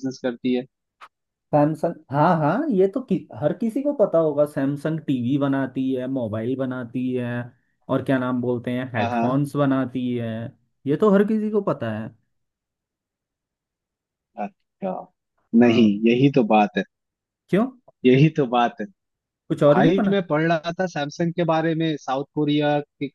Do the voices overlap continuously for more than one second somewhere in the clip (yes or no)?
no